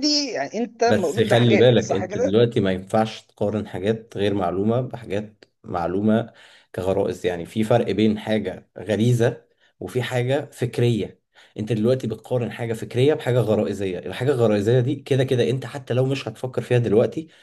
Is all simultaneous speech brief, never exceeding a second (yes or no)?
no